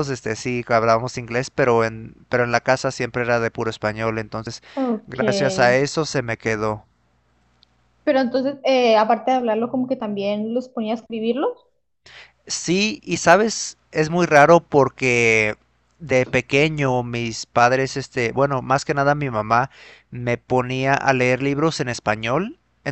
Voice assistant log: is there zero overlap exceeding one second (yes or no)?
yes